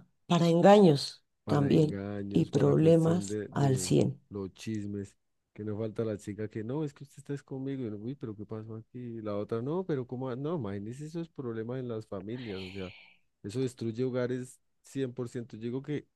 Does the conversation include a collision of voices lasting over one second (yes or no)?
yes